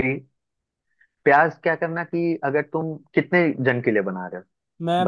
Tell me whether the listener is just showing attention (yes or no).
no